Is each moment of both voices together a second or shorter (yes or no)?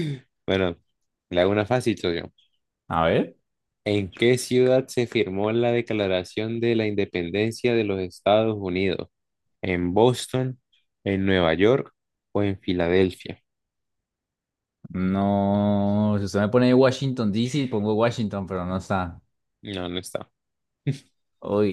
yes